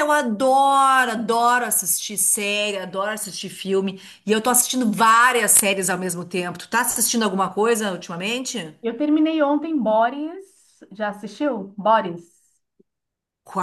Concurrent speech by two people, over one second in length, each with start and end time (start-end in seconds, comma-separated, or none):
none